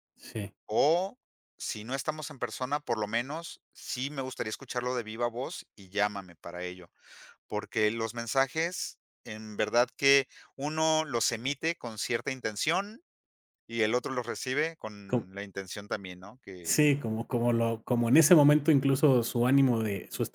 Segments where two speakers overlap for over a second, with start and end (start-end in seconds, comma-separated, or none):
none